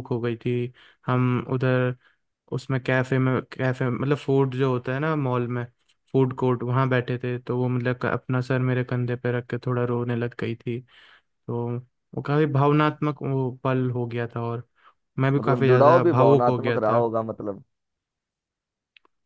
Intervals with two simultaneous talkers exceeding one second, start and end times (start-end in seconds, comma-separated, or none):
15.4-17.1